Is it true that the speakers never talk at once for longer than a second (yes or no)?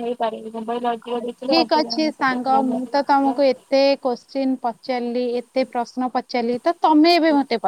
no